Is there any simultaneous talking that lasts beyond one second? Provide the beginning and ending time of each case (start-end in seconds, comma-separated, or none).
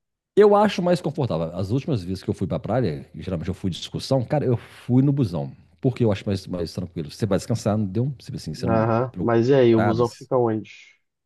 8.7-10.3